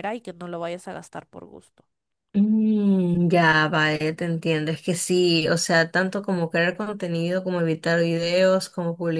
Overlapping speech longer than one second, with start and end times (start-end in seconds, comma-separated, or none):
none